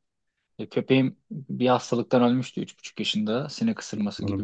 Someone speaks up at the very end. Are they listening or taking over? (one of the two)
listening